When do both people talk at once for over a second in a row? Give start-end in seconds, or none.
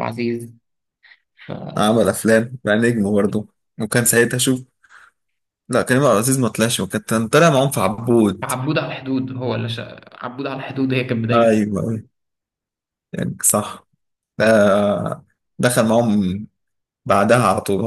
none